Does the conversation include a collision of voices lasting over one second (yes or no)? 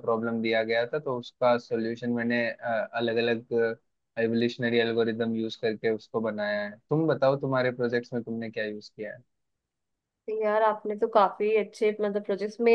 no